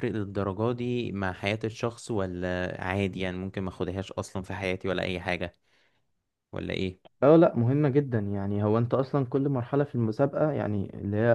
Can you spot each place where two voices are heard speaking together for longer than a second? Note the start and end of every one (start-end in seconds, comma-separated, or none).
none